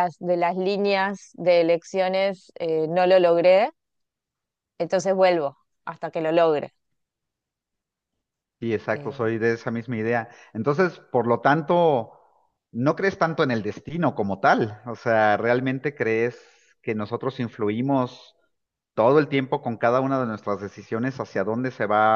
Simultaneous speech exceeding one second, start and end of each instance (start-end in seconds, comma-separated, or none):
none